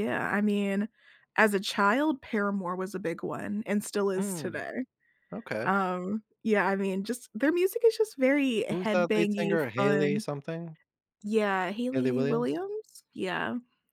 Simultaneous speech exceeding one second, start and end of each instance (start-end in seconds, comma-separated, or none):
8.7-10.2